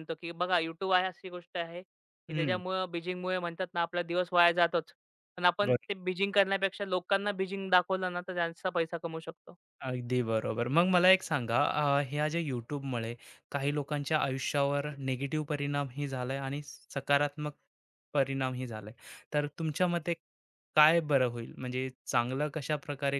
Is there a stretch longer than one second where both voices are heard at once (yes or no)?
no